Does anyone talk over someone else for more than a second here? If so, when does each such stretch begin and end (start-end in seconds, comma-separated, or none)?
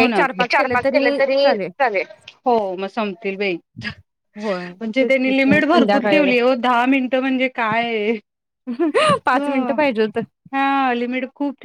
4.4-6.3